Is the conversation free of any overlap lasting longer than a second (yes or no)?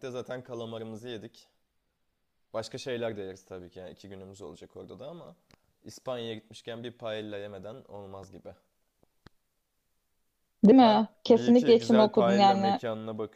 no